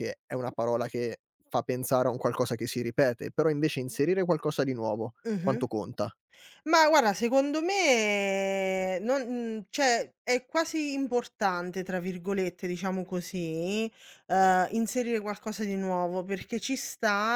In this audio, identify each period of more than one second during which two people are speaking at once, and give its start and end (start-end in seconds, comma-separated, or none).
none